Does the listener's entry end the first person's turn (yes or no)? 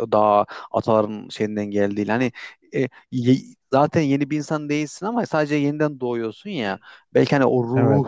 no